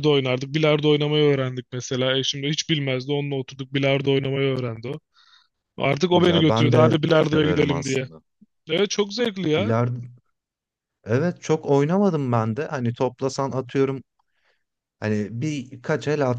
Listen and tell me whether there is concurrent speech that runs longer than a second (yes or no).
yes